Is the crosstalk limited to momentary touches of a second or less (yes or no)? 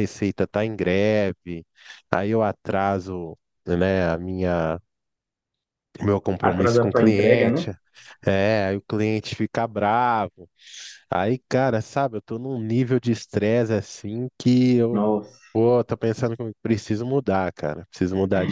no